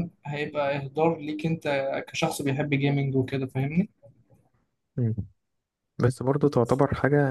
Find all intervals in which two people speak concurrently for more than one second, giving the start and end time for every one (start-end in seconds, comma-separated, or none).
none